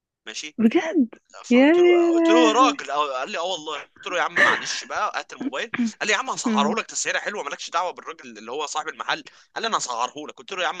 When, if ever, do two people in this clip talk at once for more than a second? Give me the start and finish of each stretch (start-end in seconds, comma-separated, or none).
1.4-2.8